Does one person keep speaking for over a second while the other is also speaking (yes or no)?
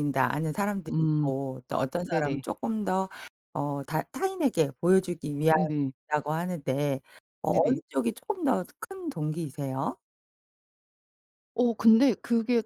no